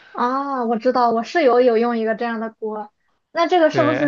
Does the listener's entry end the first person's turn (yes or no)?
no